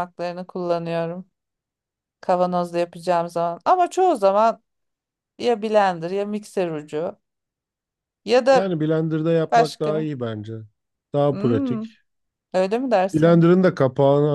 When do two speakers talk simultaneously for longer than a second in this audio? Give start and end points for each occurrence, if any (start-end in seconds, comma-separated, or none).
none